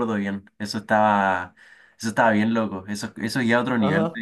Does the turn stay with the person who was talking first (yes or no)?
no